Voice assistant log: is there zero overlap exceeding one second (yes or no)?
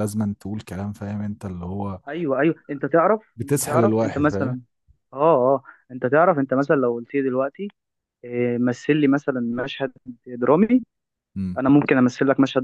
no